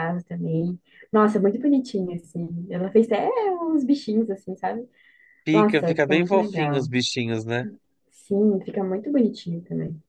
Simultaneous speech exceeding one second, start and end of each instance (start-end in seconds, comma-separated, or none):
5.5-6.9